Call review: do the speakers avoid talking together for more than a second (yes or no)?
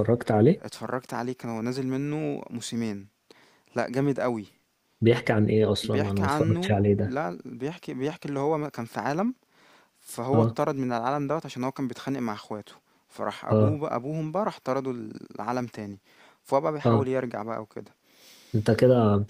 no